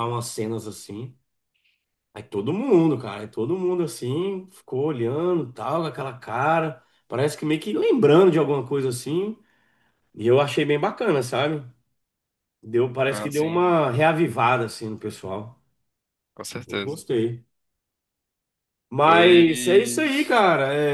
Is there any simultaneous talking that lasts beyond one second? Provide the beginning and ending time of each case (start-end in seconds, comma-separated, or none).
19.0-20.3